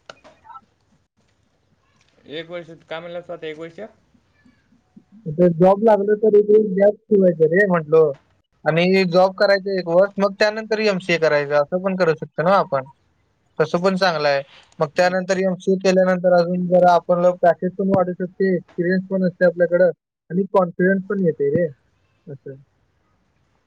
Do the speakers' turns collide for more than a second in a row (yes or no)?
no